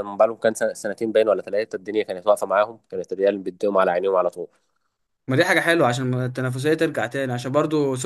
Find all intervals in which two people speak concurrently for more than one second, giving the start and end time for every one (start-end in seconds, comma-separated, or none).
none